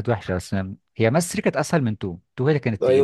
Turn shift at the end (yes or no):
yes